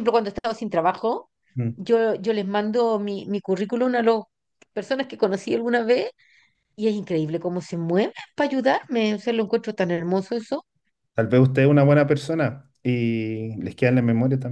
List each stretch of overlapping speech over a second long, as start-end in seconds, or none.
none